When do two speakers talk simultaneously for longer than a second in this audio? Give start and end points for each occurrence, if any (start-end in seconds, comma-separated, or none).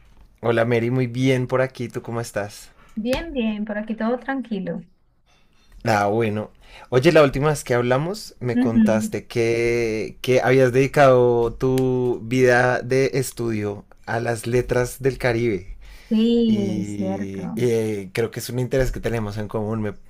16.5-17.7